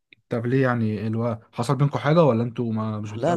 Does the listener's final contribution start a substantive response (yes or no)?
yes